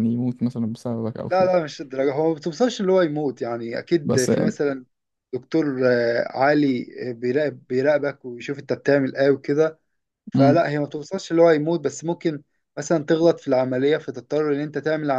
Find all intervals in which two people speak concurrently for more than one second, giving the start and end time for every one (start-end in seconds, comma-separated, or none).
none